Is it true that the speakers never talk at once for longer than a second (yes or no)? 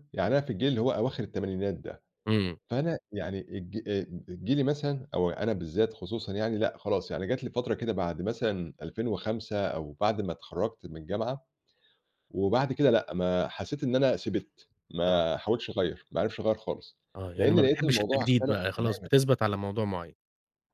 no